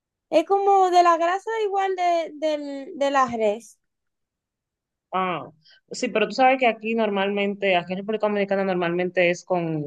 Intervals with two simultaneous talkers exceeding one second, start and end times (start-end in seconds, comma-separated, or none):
none